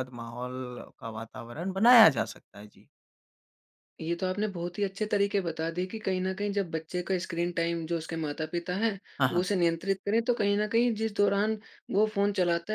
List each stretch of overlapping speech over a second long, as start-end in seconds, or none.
none